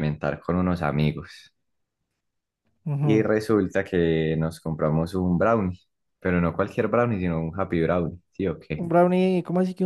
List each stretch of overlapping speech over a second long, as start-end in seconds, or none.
none